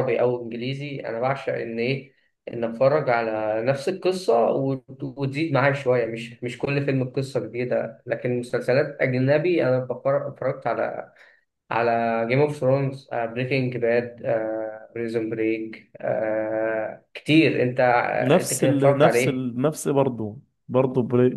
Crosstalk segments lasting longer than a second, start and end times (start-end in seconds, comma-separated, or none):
18.2-19.4